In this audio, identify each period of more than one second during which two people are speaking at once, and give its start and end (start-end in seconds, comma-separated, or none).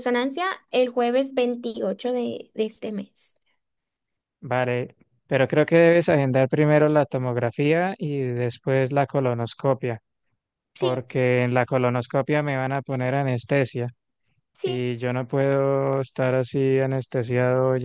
none